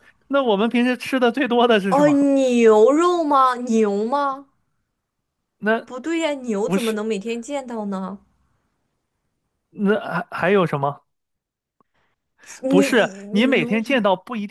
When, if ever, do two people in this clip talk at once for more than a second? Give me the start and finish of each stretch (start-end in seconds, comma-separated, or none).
12.7-14.0